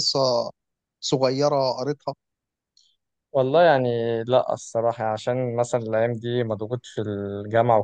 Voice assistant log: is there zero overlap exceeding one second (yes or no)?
yes